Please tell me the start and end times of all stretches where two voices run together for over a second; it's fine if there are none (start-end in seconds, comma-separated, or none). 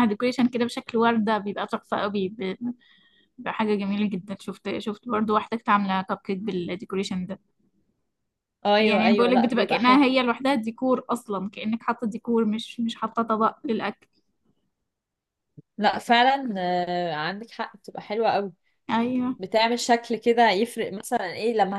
8.8-10.0